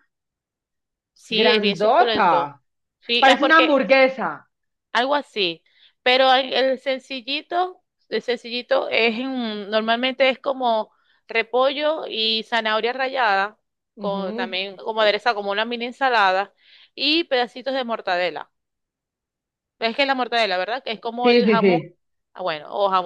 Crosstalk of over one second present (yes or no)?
yes